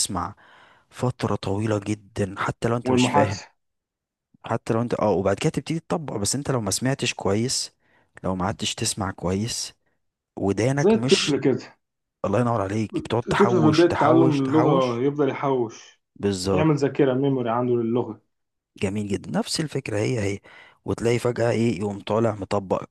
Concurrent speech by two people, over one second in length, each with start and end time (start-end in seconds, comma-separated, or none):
13.3-15.0